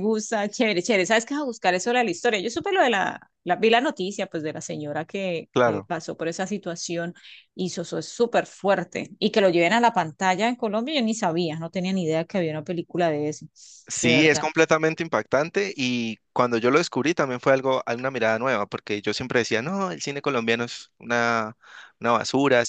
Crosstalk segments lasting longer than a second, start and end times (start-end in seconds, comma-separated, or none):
none